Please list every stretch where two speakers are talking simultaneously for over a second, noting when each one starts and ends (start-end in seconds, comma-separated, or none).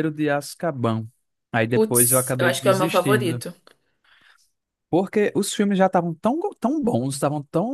1.7-3.4